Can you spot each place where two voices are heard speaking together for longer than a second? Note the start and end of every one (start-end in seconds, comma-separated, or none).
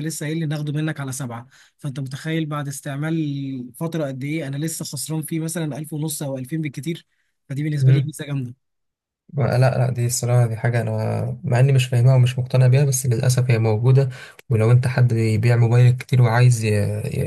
none